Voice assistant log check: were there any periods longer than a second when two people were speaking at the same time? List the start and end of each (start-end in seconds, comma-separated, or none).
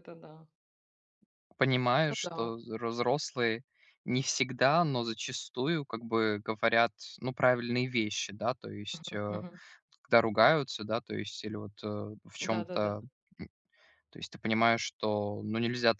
none